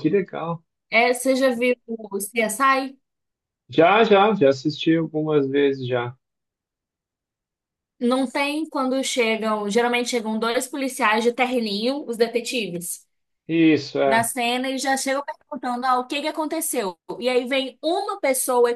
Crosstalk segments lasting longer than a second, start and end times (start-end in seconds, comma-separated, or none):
none